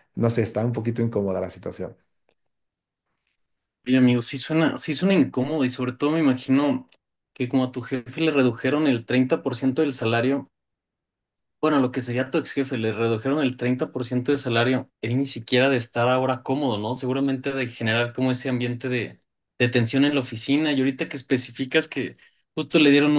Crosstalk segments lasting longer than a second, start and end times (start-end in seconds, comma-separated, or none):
none